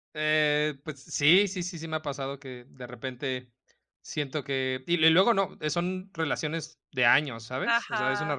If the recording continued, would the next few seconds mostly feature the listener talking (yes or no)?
no